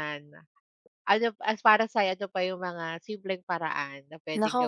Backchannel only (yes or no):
no